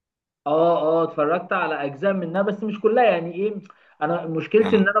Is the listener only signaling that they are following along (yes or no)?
yes